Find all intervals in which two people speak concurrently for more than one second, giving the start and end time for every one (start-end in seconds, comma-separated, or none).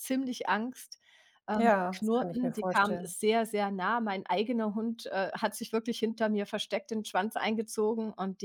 1.6-3.1